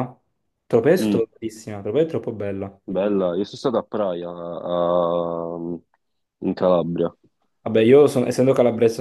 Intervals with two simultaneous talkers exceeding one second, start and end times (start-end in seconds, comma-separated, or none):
none